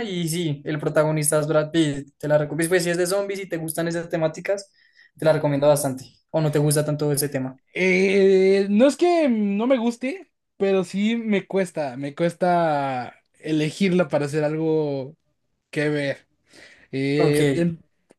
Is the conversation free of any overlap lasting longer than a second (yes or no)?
yes